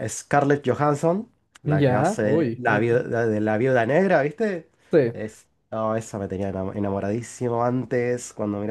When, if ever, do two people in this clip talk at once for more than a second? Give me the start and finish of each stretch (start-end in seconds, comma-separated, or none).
1.6-3.0